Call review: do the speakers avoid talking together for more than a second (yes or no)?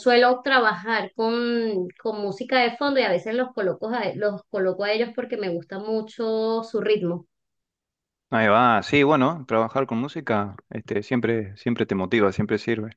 yes